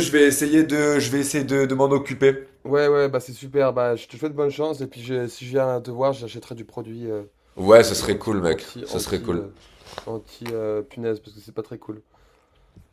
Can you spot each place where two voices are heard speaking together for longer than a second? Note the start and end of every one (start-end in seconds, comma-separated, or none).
7.7-9.4